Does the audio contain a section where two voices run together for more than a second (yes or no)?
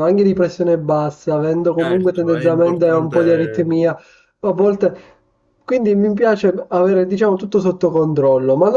yes